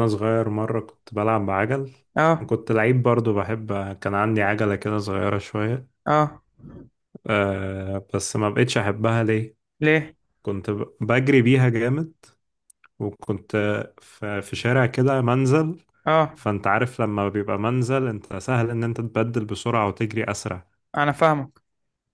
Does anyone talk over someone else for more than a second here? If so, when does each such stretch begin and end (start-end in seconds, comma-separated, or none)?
none